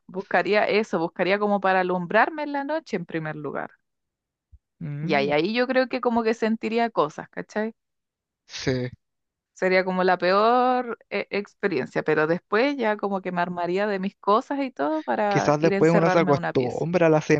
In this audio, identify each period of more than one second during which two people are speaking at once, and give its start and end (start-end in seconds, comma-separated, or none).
15.3-16.9